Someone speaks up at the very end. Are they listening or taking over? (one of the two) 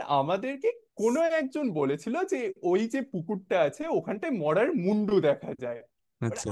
listening